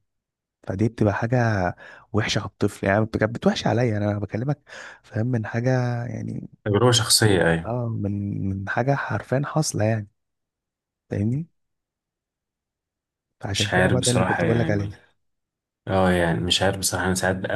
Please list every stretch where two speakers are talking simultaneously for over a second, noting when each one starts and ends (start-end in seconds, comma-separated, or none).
13.5-14.9